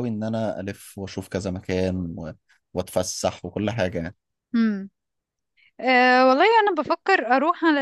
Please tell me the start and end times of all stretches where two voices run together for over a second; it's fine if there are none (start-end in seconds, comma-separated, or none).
none